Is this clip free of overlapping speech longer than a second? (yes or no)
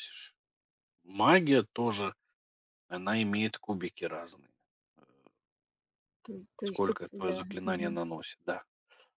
no